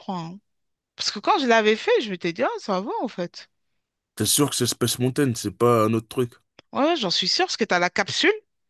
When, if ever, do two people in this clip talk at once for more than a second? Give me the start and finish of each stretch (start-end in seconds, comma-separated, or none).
none